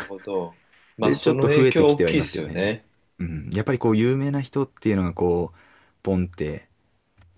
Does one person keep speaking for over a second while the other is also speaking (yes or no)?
yes